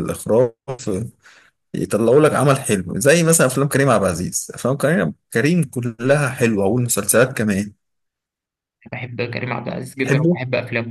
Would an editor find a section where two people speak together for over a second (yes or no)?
no